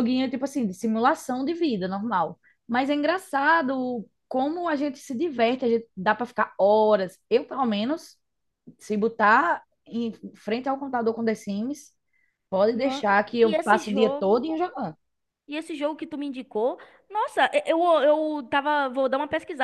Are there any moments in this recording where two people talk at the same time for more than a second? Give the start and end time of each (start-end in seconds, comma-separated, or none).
12.7-14.6